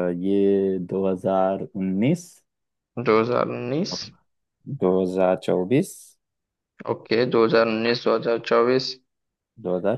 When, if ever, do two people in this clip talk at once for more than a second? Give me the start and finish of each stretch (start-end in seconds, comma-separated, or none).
none